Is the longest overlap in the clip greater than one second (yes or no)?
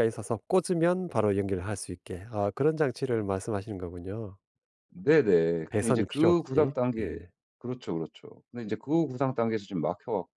yes